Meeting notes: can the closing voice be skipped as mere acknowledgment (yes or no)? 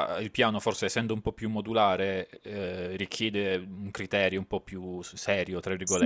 no